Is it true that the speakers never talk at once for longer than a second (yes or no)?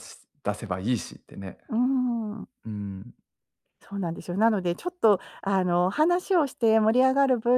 yes